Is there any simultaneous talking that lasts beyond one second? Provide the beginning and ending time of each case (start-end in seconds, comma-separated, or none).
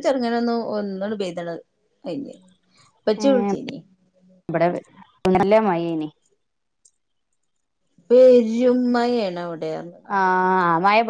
none